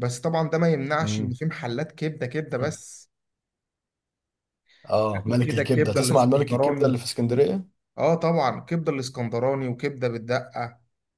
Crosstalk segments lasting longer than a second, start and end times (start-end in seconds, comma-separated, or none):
5.2-7.0